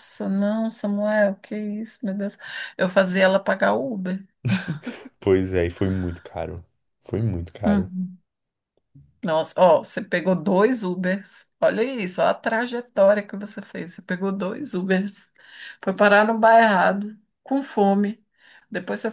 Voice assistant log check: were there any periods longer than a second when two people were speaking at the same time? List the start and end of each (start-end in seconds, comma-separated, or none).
none